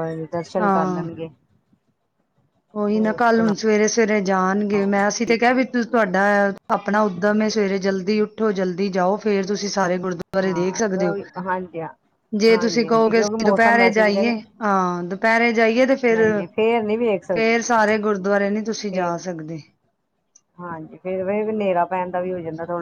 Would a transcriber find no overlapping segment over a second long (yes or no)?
no